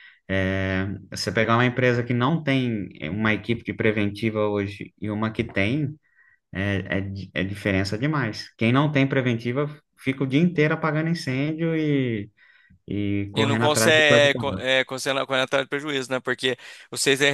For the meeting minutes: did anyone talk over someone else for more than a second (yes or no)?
yes